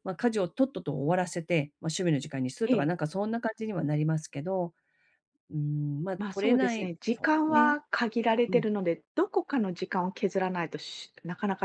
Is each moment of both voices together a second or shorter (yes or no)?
no